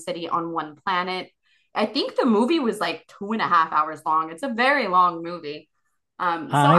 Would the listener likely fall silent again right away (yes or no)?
no